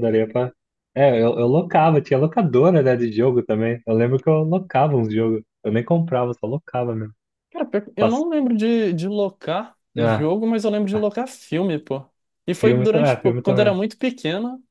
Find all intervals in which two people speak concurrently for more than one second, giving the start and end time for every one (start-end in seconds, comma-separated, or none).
12.5-13.7